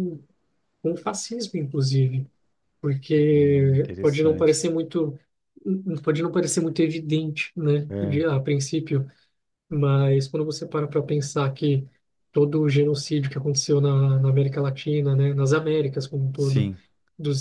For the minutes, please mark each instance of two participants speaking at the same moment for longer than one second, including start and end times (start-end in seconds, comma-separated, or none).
3.5-4.7